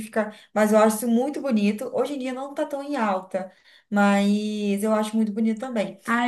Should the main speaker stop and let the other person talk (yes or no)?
yes